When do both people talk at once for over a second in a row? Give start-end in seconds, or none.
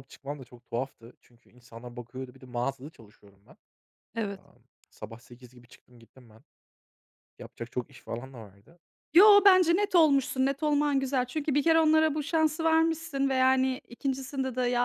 none